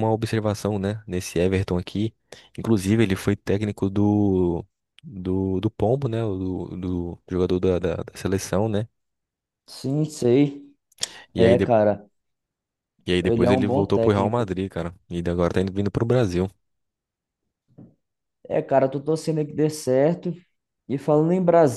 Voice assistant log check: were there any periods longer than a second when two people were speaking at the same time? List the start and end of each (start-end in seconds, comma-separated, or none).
13.2-14.5